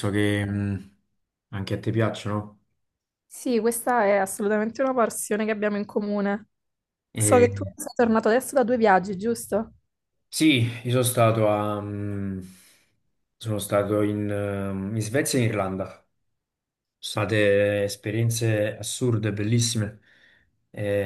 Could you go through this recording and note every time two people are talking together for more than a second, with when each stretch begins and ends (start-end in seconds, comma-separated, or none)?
none